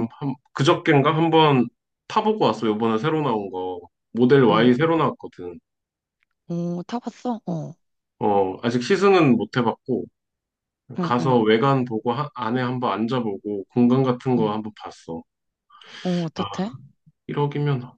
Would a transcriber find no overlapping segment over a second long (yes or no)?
yes